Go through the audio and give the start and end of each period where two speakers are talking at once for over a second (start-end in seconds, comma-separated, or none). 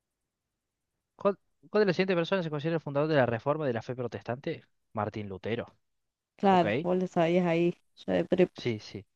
none